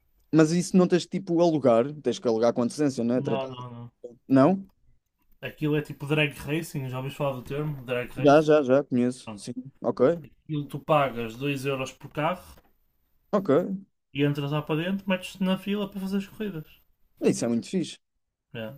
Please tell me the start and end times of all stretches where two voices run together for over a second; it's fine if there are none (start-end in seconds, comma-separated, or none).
none